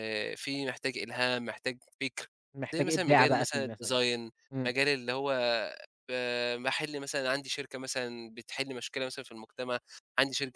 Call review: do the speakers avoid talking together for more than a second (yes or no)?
no